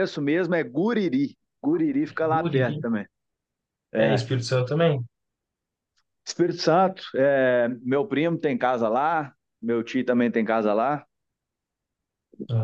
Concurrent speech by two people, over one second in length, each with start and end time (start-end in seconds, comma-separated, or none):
none